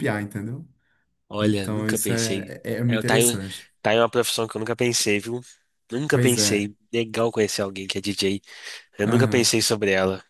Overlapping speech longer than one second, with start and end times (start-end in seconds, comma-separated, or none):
1.4-3.4